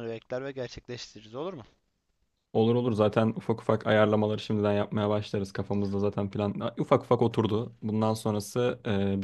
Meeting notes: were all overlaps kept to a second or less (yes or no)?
yes